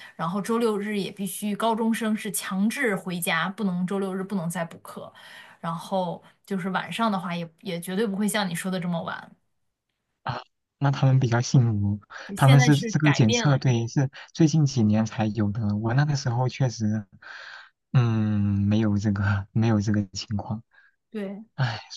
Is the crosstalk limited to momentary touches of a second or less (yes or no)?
no